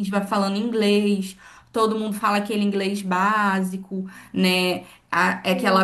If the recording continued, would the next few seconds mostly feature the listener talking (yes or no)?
no